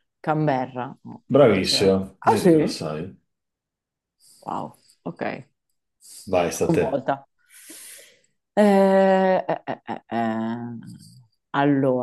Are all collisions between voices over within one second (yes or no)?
no